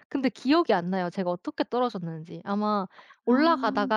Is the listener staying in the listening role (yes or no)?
yes